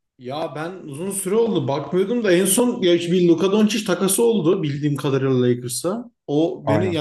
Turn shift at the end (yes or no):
no